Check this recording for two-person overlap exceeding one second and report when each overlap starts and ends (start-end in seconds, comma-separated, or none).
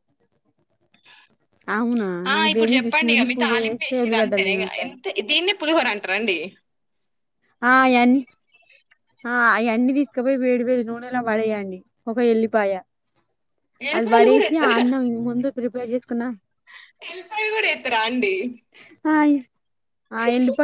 2.3-5.0